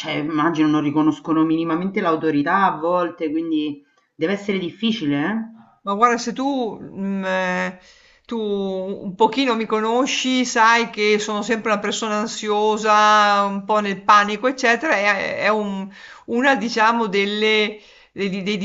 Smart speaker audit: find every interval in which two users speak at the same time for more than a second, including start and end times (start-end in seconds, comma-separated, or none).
none